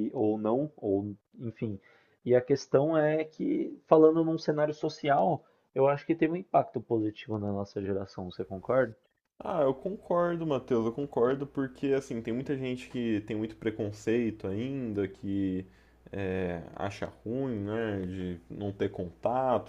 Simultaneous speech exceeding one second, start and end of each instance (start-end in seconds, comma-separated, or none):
none